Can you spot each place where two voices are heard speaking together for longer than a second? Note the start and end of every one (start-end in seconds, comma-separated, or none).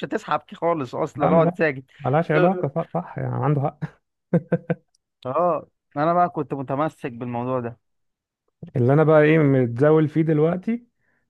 none